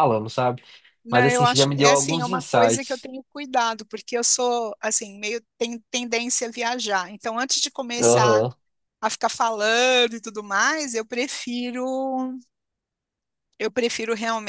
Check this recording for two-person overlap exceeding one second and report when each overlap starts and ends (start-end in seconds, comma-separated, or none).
1.1-3.1